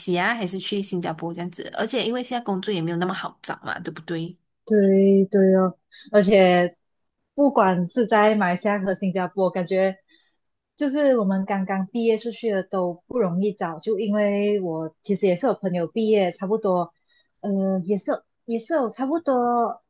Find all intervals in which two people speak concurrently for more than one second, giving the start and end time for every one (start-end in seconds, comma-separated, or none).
none